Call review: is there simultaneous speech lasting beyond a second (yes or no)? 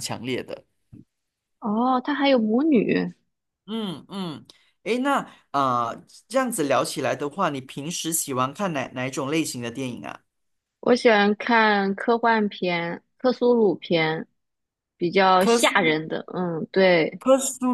no